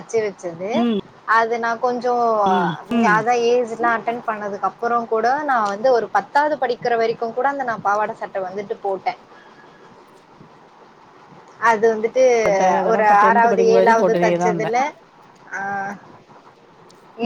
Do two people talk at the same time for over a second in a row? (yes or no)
yes